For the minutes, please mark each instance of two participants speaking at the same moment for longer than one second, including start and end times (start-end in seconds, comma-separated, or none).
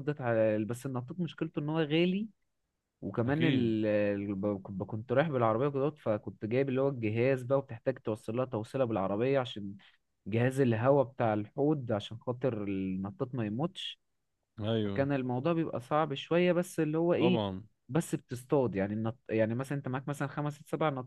none